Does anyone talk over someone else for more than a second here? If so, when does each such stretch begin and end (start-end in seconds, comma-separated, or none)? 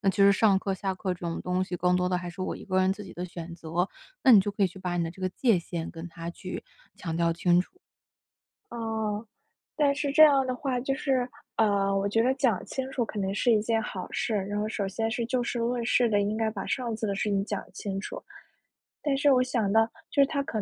none